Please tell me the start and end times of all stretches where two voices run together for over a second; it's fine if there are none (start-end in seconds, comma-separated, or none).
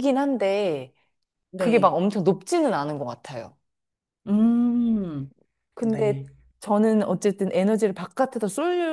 none